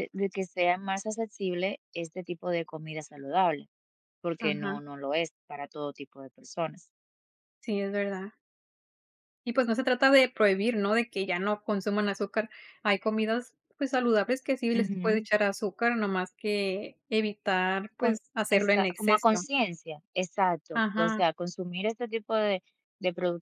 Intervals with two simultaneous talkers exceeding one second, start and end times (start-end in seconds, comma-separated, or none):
18.0-19.4